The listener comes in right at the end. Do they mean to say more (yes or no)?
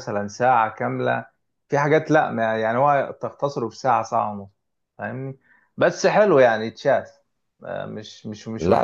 yes